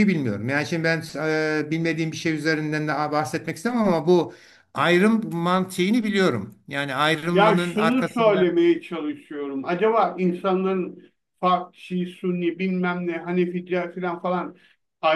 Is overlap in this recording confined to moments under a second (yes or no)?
no